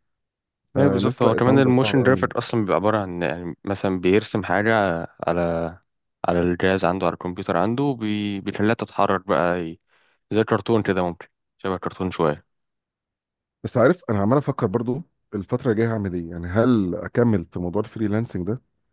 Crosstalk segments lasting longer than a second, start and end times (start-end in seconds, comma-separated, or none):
0.8-2.3